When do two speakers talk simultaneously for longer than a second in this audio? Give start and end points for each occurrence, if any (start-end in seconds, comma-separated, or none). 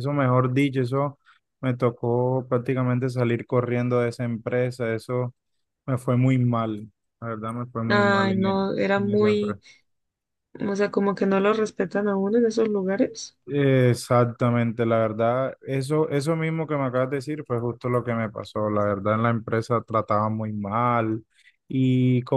7.9-9.6